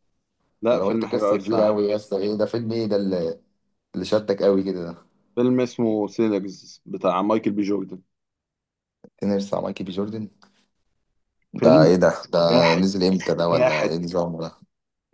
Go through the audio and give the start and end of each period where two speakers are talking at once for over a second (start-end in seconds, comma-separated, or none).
0.7-1.9